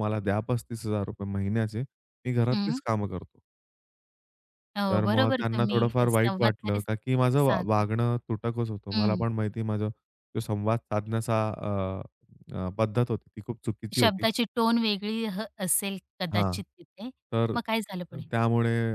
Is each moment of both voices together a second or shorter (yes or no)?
no